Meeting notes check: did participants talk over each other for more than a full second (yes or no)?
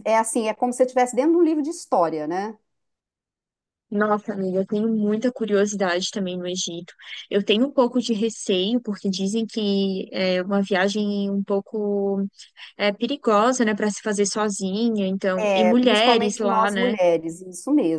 yes